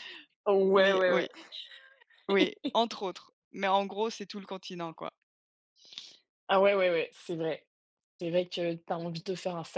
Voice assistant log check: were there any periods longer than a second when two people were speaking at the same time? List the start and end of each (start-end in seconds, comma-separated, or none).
none